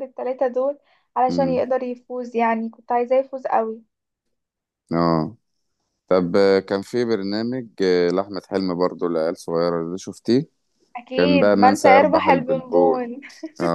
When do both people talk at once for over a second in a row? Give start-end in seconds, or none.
11.1-13.1